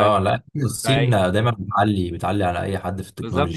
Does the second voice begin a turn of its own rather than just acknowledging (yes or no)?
yes